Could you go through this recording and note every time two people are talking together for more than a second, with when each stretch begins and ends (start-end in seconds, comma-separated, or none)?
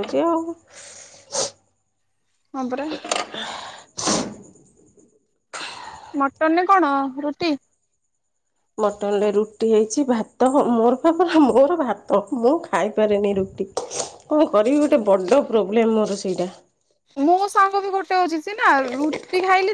none